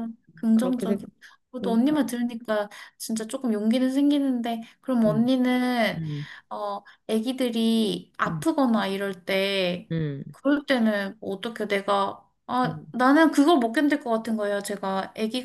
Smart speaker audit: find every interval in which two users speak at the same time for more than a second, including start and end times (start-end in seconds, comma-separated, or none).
none